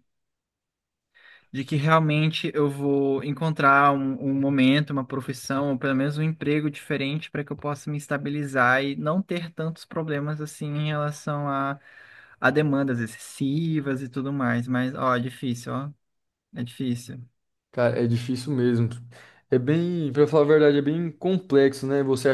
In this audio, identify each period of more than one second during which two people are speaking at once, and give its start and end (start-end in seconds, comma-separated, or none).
none